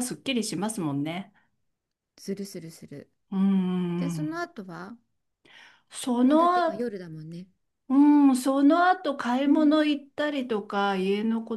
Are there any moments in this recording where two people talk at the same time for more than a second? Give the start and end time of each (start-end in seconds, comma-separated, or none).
none